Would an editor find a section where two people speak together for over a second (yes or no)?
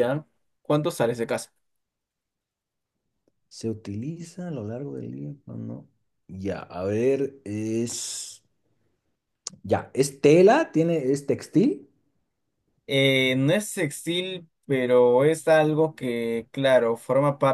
no